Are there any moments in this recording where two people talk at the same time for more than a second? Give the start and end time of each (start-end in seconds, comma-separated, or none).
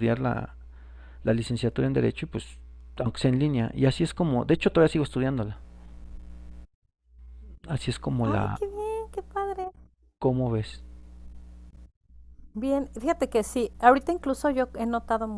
none